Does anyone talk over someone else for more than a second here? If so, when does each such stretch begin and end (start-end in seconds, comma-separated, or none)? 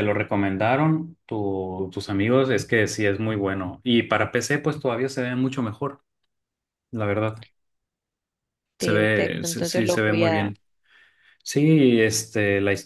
8.8-10.5